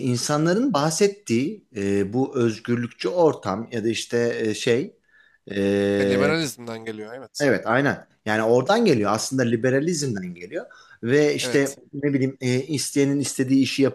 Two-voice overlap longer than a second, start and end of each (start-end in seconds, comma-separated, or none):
none